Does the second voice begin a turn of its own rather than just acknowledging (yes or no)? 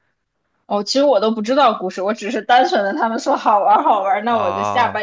no